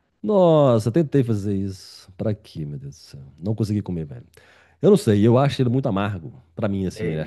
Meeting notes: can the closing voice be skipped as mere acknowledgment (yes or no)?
yes